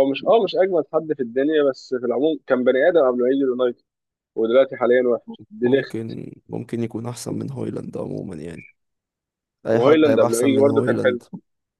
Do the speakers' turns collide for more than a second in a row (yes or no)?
yes